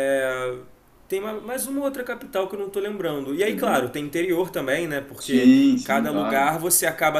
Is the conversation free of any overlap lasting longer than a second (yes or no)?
no